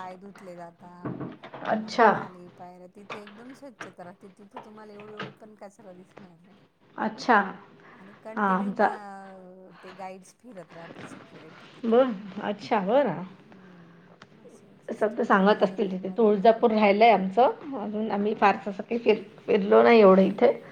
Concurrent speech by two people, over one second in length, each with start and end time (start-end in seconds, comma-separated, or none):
14.9-17.3